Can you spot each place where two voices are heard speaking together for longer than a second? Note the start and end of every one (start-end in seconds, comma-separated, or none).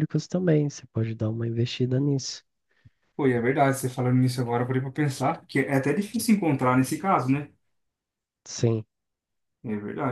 none